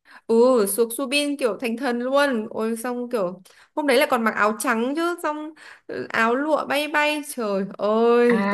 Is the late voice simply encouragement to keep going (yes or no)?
no